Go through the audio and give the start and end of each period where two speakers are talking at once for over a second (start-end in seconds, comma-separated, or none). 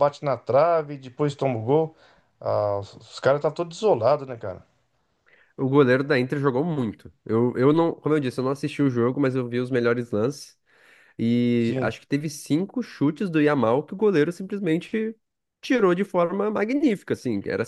none